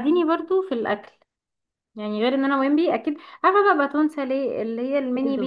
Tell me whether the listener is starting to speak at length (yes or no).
no